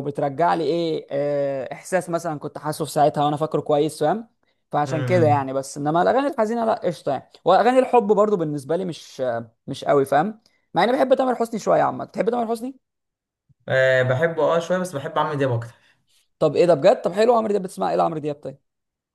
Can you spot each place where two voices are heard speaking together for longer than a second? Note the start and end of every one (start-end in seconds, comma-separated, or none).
none